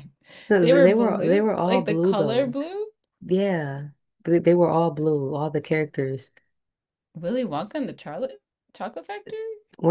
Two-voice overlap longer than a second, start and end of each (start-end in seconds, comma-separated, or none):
0.6-2.6